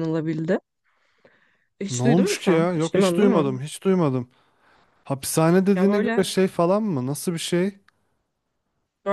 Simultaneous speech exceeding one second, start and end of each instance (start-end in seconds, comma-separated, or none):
1.9-3.6